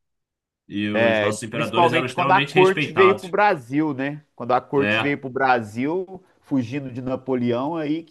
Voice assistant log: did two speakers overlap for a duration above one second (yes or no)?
yes